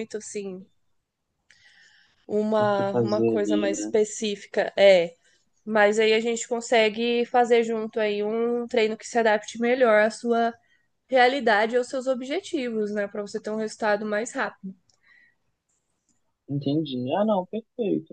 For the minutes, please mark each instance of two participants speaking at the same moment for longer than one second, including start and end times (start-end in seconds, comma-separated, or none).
2.6-3.9